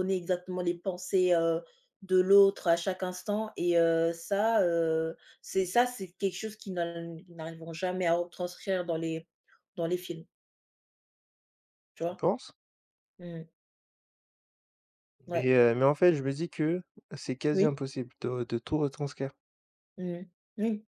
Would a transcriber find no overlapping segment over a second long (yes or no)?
yes